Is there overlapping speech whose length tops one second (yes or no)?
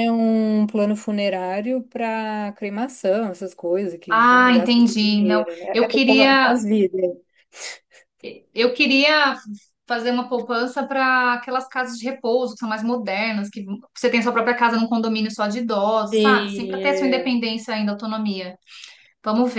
yes